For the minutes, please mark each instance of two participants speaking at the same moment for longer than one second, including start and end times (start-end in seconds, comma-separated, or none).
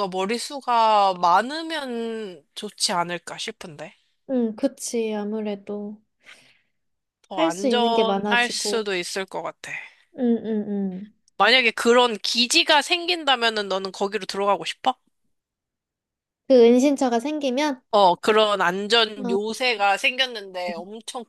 7.3-8.9